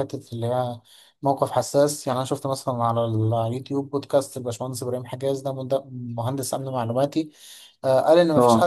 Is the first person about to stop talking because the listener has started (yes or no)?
no